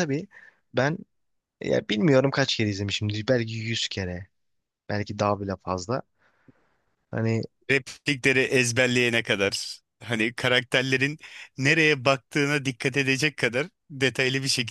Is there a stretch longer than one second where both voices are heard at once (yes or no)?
no